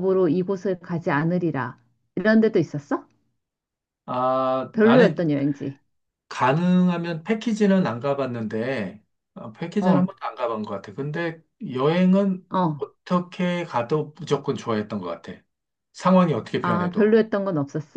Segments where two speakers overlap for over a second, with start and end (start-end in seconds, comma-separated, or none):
none